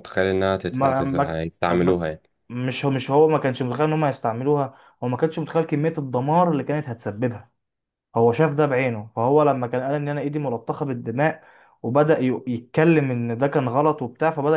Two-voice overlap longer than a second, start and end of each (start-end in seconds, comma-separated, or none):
0.7-2.0